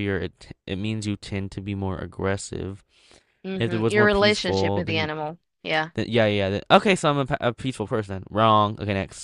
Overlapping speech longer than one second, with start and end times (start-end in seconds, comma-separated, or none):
3.6-5.1